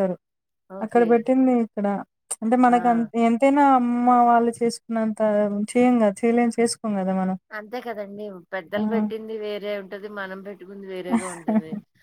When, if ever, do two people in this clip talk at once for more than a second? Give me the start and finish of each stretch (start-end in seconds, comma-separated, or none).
none